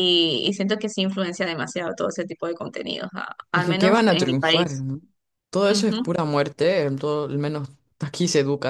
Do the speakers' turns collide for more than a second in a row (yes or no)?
yes